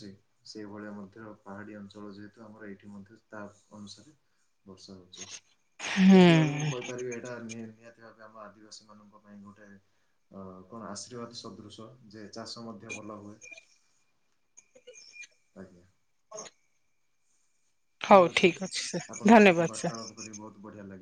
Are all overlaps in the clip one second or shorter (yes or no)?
no